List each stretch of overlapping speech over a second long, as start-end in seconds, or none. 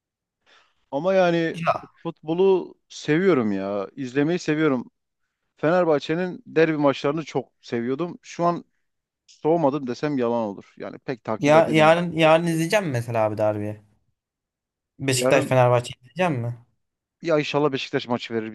none